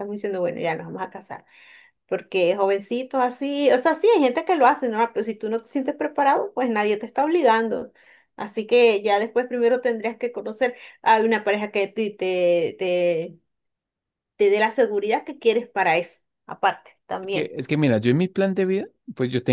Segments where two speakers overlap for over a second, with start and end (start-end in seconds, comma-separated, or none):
none